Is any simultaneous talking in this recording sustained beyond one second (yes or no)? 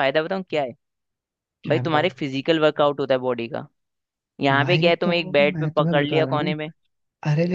yes